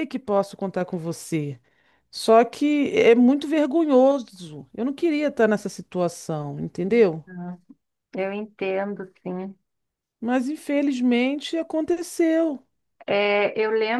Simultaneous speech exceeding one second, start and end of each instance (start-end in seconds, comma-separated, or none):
none